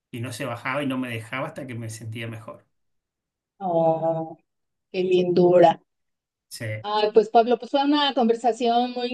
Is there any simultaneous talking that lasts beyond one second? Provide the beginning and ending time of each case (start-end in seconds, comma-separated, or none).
none